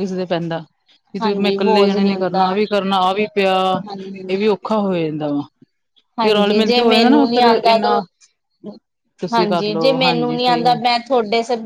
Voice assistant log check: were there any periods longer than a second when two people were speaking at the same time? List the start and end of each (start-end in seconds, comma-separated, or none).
1.2-2.5, 6.3-8.0, 9.3-10.8